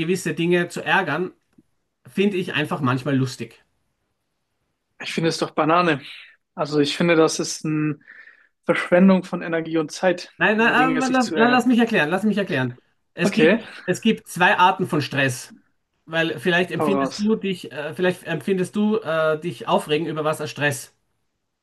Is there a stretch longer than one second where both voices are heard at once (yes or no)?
yes